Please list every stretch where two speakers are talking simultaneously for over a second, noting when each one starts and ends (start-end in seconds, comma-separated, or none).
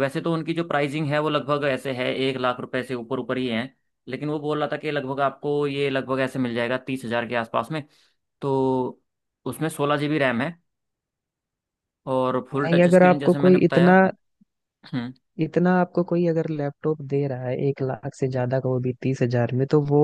12.5-13.9